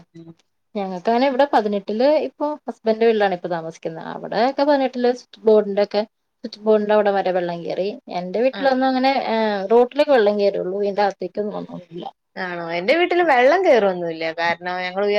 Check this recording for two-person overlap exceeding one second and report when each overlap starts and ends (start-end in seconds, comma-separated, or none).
none